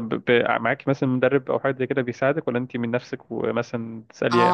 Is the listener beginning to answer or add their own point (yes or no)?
yes